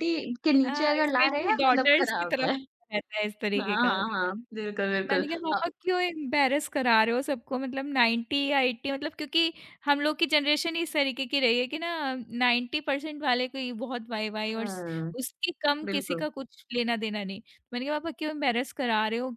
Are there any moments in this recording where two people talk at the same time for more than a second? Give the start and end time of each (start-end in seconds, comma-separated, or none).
0.7-2.5